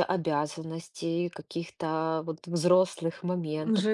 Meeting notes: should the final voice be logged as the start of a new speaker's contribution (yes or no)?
yes